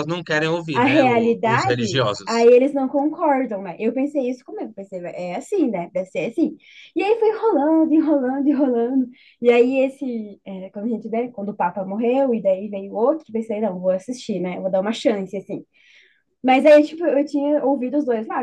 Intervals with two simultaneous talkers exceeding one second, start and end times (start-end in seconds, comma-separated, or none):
0.7-2.5